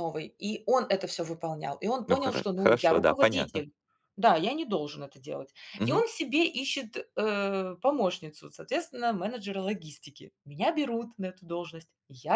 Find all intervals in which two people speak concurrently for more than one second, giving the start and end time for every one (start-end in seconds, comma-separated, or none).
2.0-3.6